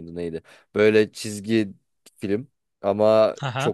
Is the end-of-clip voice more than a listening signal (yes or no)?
no